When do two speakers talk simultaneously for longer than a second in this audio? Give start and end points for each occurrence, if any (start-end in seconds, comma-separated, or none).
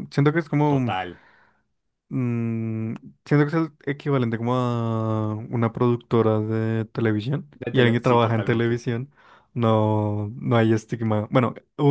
7.5-8.8